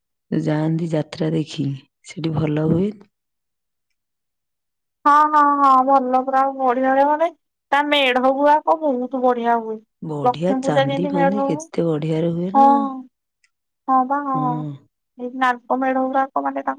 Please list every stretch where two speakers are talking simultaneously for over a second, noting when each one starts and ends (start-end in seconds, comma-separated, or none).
10.3-11.7